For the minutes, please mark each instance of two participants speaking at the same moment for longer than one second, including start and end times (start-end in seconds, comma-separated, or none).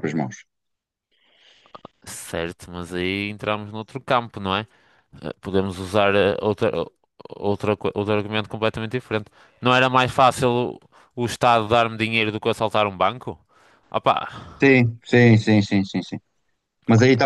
none